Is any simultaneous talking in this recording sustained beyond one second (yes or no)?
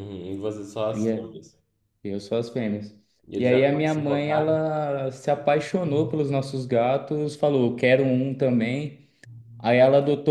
yes